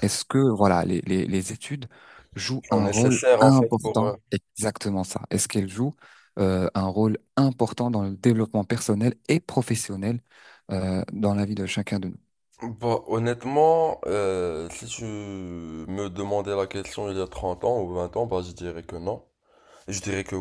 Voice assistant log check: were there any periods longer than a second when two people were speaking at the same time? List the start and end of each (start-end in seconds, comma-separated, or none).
2.7-4.1